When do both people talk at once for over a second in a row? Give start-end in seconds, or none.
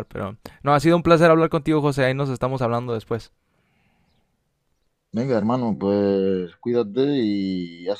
none